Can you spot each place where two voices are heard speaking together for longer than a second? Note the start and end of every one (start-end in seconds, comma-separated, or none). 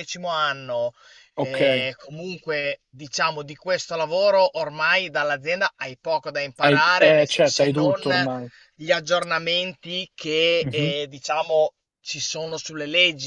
6.6-8.0